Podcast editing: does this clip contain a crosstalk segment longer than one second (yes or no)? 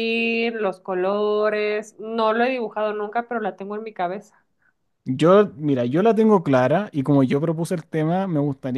no